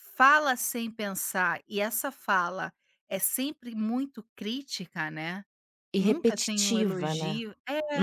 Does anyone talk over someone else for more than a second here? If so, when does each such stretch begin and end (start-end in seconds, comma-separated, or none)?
6.0-7.4